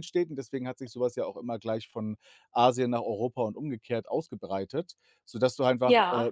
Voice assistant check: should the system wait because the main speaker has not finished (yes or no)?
yes